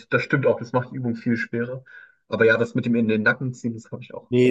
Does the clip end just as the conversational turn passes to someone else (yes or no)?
yes